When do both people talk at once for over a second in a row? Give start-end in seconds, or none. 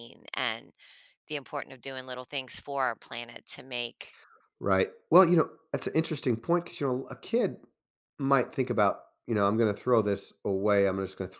none